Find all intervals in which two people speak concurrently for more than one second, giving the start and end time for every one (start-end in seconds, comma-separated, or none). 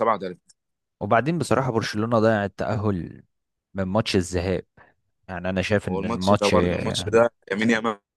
5.8-7.1